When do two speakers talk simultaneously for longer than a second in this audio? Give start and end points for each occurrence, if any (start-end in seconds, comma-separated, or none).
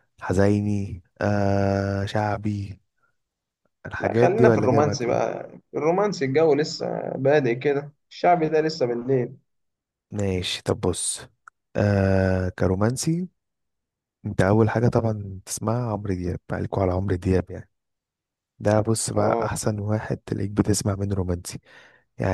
4.0-5.2